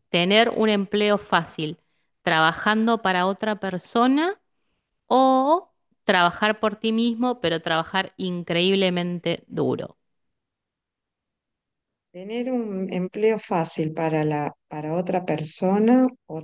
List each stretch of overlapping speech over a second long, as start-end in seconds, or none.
none